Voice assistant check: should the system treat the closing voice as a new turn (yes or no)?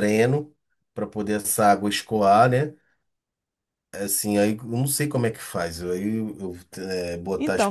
yes